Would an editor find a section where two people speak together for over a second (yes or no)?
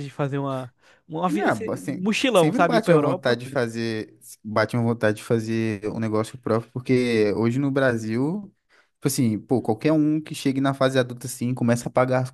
yes